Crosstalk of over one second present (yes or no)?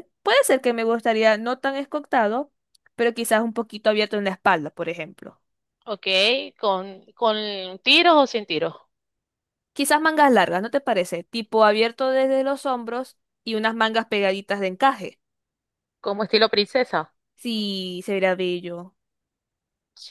no